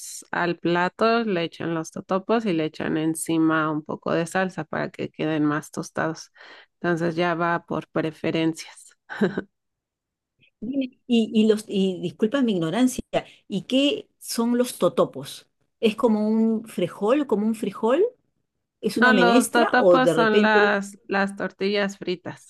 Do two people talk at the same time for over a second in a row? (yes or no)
yes